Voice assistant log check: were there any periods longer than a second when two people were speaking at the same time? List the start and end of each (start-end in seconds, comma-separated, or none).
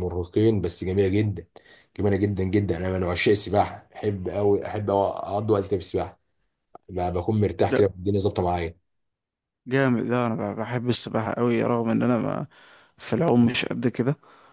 none